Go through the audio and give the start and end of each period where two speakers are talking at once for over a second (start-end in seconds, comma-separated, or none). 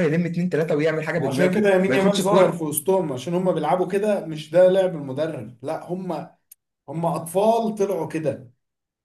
1.2-2.6